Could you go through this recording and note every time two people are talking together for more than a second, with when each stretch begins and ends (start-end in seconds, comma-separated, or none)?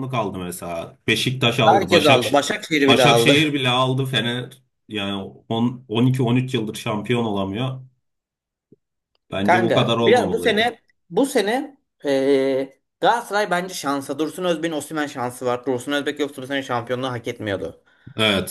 9.4-10.8